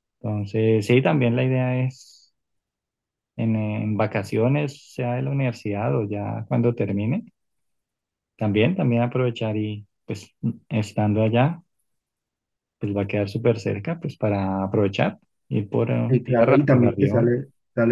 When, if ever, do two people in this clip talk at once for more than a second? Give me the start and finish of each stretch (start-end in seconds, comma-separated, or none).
16.1-17.4